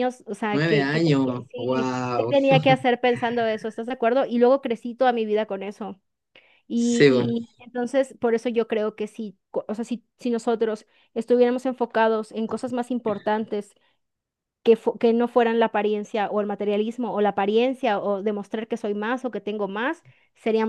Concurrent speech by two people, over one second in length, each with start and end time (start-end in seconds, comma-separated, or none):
0.5-2.3